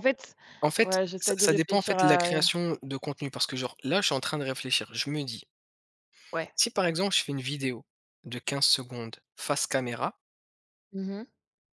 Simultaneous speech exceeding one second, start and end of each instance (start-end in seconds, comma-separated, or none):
0.8-2.3